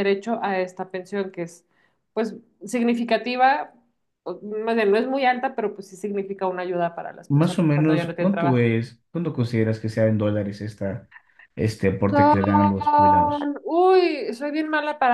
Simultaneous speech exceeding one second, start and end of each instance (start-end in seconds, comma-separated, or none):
7.3-8.7